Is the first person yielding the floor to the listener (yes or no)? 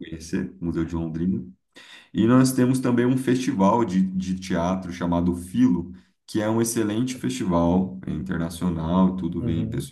no